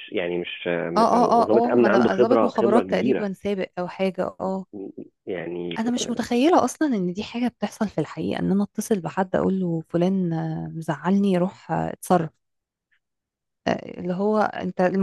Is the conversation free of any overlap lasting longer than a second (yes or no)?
no